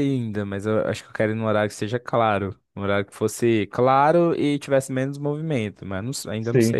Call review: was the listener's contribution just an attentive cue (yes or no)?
no